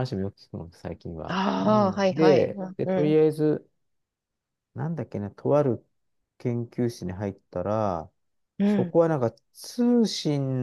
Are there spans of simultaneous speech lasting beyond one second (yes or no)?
yes